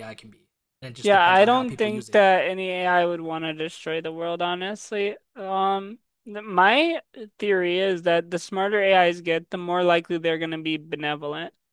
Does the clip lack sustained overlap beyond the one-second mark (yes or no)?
no